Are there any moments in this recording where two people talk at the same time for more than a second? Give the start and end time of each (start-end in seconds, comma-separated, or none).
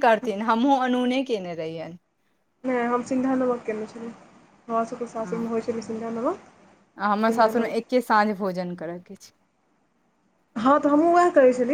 none